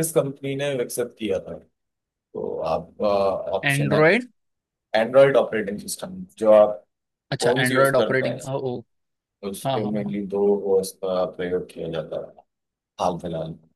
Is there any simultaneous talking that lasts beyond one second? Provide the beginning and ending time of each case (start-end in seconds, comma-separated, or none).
7.4-8.7